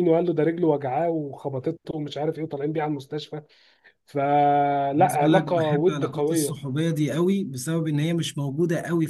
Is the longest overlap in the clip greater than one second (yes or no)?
yes